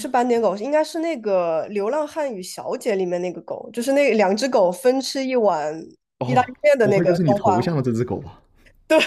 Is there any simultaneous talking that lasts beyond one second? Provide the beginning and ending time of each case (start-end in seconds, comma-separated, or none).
6.2-7.7